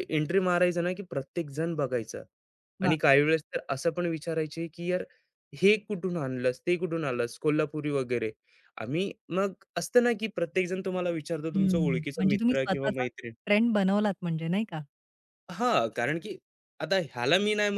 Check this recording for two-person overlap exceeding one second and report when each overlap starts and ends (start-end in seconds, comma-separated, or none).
11.5-13.0